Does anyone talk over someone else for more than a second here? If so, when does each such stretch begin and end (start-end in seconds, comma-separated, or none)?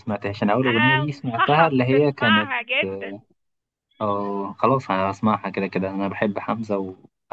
0.7-2.5